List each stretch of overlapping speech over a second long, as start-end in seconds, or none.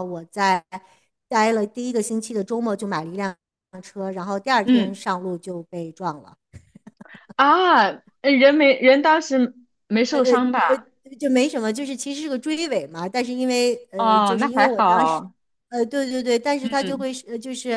14.0-15.2